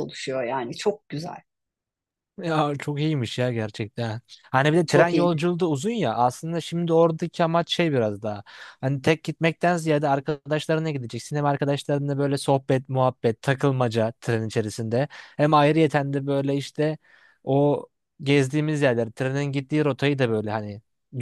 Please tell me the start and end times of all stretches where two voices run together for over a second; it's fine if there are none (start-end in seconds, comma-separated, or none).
none